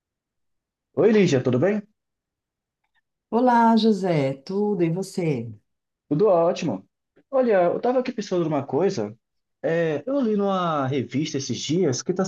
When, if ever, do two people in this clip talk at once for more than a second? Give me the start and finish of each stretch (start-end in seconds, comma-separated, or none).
none